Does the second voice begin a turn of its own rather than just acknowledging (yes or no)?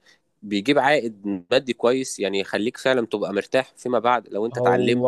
no